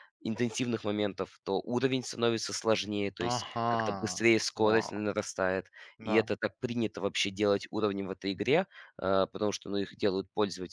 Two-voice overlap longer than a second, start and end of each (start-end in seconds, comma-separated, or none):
3.3-5.0